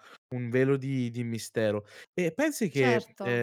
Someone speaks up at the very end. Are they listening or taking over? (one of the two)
listening